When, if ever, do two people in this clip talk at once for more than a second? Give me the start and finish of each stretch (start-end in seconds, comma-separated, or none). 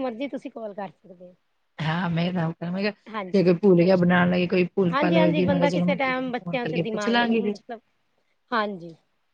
4.9-7.6